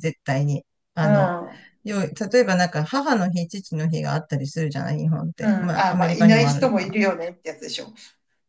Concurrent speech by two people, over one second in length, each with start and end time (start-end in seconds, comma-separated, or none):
5.4-7.0